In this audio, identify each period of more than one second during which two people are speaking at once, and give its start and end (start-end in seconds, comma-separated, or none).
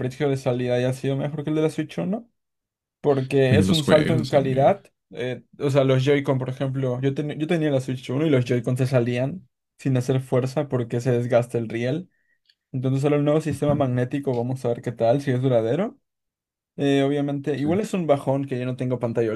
3.5-4.7